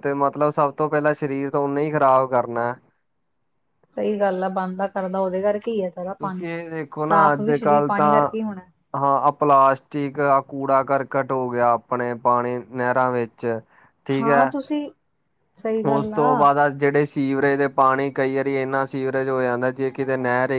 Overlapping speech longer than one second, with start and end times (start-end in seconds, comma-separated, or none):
none